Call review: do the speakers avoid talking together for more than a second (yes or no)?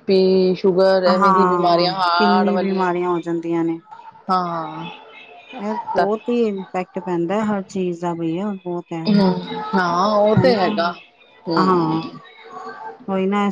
no